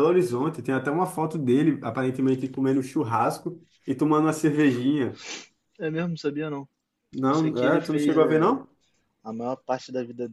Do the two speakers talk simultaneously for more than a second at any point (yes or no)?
yes